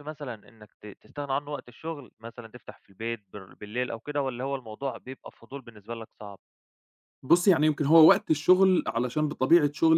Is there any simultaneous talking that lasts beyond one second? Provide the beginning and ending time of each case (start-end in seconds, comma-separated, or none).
none